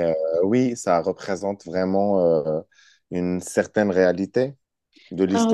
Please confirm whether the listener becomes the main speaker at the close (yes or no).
yes